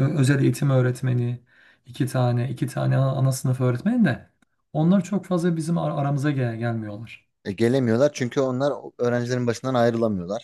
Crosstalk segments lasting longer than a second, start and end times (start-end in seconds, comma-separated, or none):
none